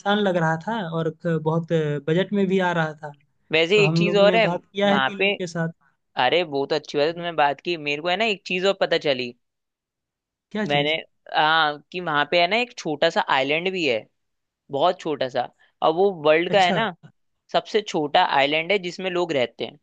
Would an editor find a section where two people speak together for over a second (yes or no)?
yes